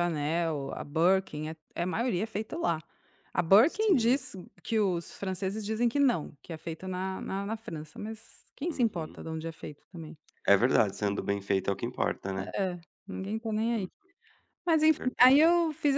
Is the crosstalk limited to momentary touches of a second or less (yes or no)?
yes